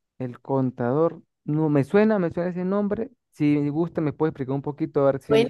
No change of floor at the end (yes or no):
no